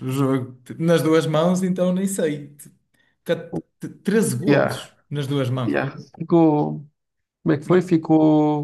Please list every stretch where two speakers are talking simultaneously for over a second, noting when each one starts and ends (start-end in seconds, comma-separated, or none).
none